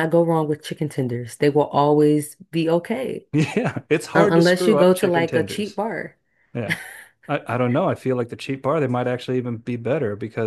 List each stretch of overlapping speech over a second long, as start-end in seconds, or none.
4.1-5.8